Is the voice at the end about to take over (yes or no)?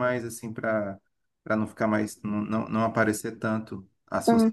no